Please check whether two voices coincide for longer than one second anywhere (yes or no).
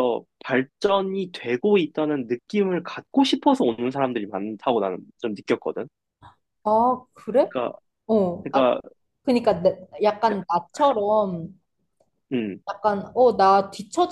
no